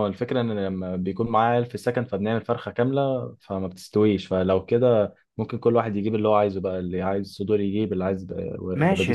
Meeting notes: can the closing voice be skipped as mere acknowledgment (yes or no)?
no